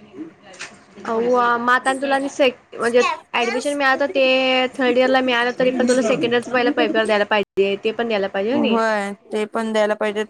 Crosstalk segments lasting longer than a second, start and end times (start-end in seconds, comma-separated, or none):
none